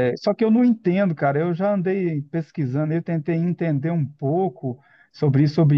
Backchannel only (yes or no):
yes